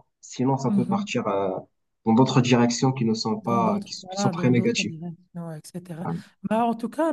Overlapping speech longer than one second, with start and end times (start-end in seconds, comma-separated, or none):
3.4-5.0